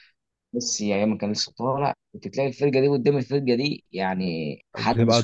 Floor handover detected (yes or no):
yes